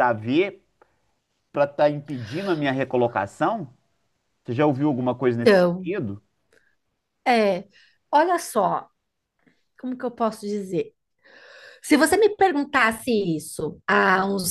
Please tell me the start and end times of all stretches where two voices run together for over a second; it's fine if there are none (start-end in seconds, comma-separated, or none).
none